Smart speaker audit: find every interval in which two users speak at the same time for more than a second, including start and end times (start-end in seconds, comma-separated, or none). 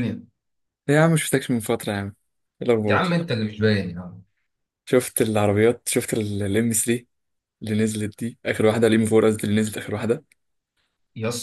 none